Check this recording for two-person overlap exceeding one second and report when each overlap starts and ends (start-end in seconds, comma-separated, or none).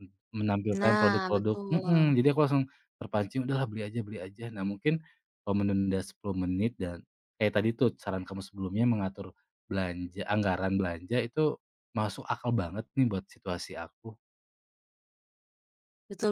0.7-2.1